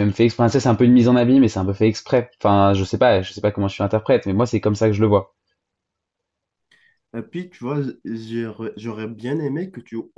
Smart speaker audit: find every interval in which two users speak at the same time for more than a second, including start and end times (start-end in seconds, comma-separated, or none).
none